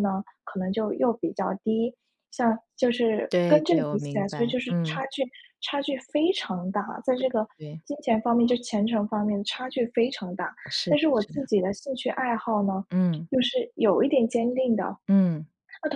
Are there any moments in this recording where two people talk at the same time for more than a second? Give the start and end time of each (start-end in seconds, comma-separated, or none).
3.3-5.0